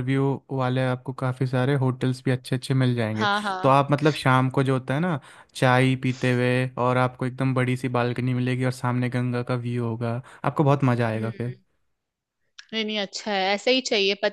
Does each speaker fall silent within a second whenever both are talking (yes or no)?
yes